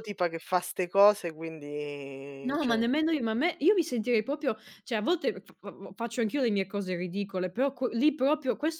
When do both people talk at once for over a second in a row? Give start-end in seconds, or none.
none